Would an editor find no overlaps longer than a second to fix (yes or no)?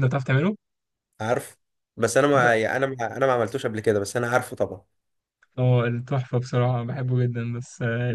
yes